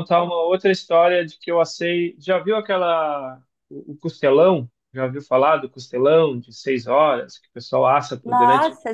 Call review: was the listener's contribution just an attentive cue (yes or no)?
no